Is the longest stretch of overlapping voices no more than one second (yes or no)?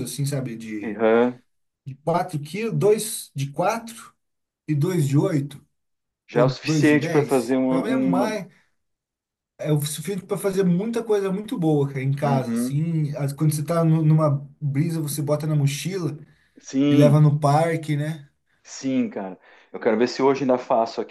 no